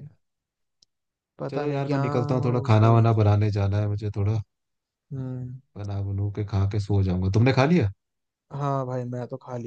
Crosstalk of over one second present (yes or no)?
yes